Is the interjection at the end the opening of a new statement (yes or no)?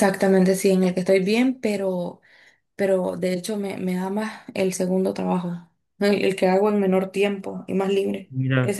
no